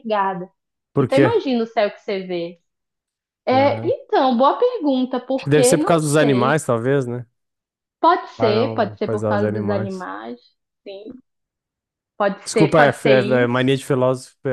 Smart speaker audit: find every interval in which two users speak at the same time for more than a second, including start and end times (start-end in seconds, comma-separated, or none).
5.3-6.6, 8.4-10.1, 12.4-13.7